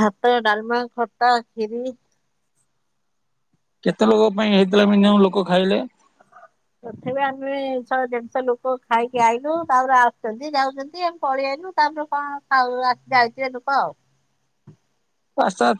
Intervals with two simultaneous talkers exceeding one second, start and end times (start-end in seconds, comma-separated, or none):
none